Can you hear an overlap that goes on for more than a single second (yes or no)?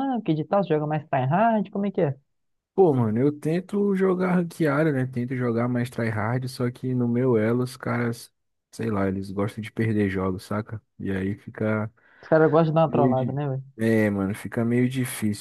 no